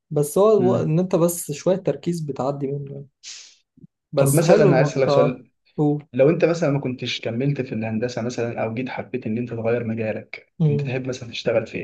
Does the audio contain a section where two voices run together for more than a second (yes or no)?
yes